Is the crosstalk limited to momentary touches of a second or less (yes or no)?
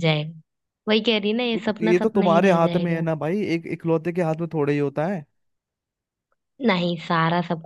no